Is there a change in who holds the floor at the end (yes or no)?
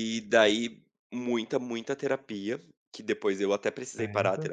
no